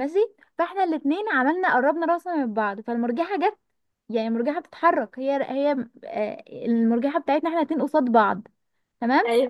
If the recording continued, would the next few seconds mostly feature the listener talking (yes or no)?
no